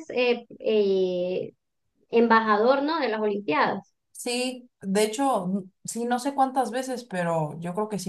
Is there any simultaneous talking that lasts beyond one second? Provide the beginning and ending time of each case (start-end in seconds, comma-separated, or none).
none